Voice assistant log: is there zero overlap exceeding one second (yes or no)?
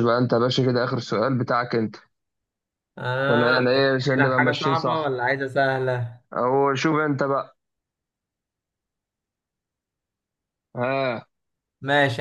no